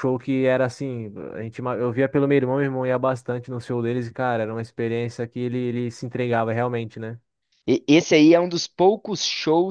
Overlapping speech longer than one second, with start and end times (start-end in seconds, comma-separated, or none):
none